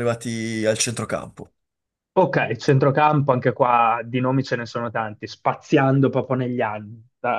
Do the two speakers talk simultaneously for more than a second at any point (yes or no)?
no